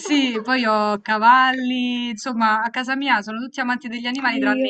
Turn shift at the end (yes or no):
no